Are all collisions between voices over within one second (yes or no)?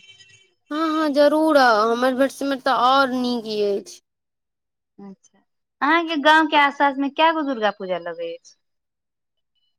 yes